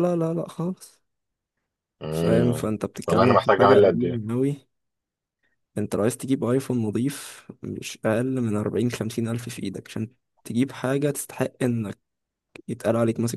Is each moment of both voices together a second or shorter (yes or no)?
no